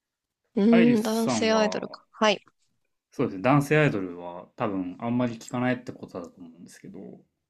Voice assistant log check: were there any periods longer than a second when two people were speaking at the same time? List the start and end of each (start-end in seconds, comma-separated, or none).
0.7-2.0